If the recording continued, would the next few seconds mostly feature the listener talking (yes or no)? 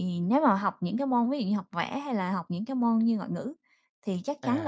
no